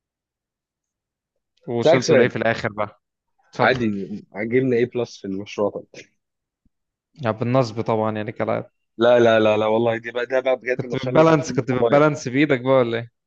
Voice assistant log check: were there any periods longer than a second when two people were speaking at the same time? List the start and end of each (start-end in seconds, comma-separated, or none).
10.8-12.2